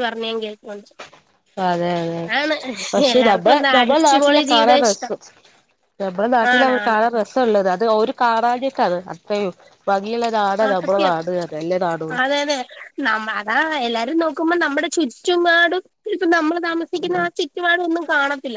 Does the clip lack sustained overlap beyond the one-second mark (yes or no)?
no